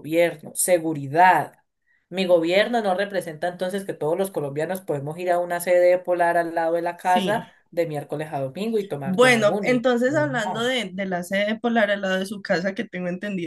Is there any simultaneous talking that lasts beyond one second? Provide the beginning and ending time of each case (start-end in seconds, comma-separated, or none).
9.0-10.8